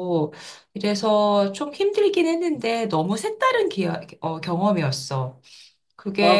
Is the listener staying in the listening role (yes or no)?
no